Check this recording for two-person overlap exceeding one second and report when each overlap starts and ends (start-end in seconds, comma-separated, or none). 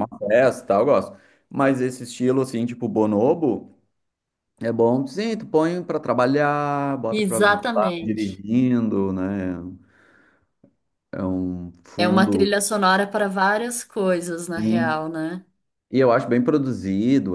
7.1-8.4